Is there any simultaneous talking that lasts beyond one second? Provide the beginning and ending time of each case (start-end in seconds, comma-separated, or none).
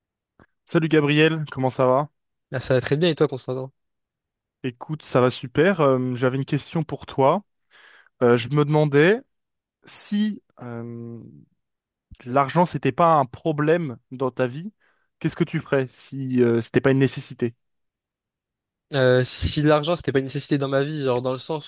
none